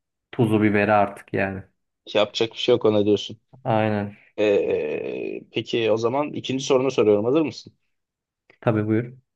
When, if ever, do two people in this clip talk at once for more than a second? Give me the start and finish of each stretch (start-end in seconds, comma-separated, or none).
none